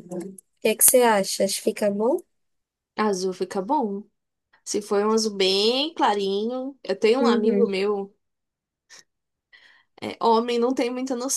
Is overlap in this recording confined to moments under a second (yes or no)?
yes